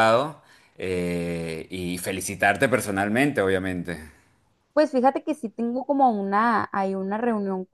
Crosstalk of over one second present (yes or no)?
no